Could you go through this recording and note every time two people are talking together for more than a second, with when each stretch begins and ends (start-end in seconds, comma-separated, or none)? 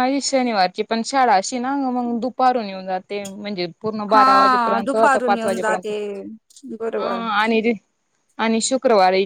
4.1-5.9